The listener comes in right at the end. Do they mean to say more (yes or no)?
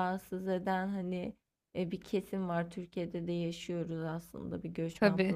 no